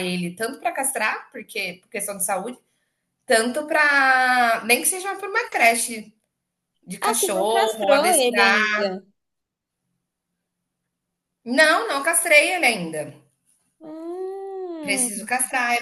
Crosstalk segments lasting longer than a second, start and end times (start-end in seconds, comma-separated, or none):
7.0-8.6